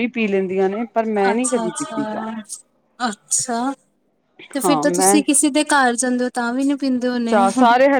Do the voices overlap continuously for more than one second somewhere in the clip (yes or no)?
no